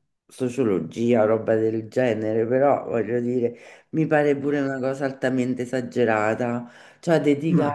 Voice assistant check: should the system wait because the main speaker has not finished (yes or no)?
yes